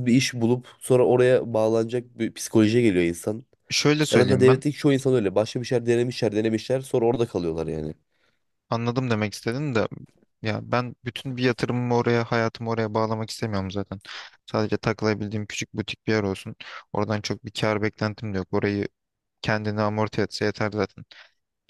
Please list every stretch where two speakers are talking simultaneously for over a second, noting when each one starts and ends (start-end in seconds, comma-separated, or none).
none